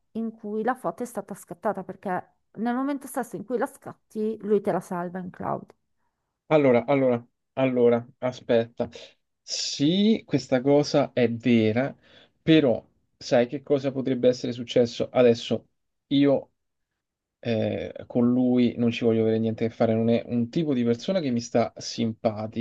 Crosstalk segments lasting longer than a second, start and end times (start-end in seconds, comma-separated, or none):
none